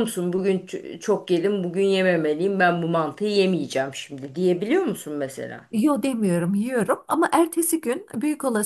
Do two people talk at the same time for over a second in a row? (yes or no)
no